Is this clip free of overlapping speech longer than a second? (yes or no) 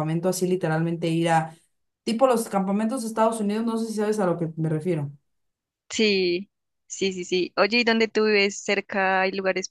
yes